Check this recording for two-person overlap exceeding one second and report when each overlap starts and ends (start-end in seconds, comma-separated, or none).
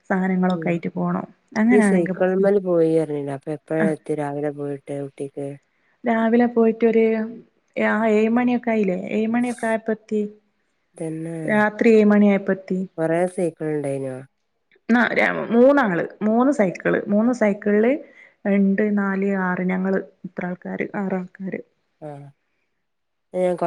none